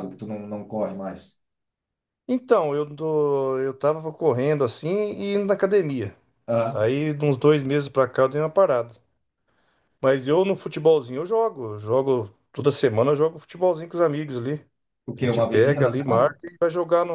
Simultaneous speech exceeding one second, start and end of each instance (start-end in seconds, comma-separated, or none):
15.2-16.4